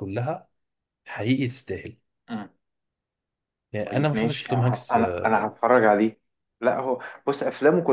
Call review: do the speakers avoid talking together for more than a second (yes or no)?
no